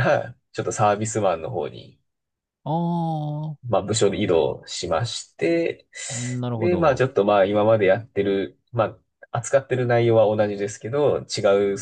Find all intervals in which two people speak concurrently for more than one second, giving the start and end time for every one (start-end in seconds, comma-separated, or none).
none